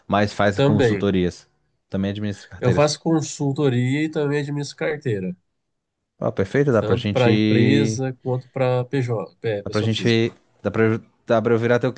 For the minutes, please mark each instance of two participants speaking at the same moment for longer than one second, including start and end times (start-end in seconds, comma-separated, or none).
6.8-8.0